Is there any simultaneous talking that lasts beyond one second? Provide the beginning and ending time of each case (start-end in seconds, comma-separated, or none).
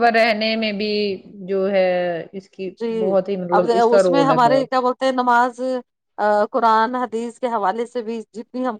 none